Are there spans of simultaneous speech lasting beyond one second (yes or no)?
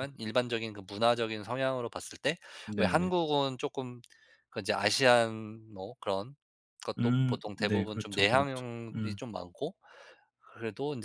yes